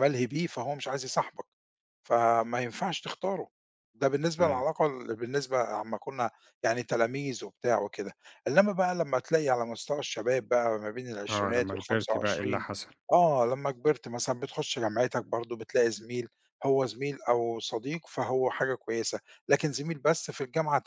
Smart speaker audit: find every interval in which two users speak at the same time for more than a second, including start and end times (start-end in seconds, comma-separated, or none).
11.3-12.6